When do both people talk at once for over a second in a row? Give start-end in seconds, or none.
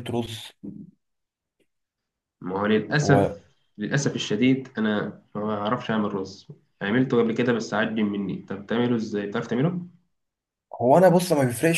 none